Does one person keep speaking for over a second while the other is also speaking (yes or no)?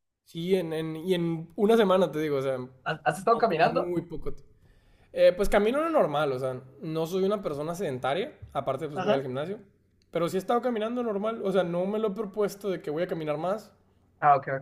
no